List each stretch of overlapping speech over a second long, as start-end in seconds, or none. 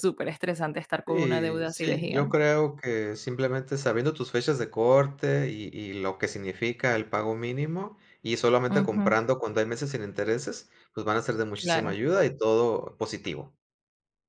1.1-2.5